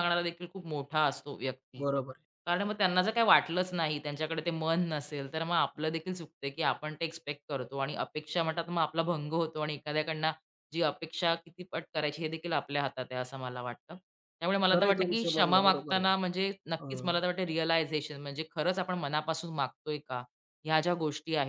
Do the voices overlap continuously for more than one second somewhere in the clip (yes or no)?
yes